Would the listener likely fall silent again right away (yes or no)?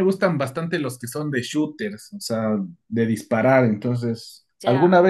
yes